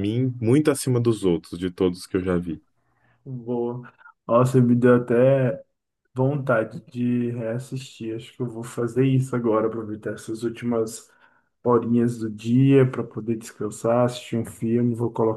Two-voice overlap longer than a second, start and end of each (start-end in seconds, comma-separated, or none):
none